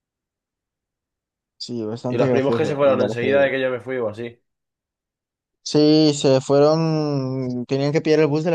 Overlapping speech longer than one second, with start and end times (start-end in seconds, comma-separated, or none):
2.1-3.5